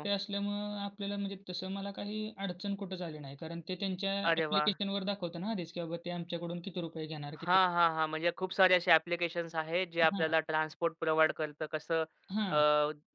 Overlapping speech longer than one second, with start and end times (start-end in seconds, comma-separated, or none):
none